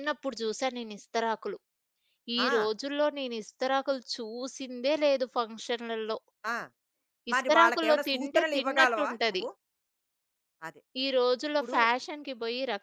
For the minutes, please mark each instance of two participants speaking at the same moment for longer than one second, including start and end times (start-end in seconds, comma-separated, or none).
7.3-9.4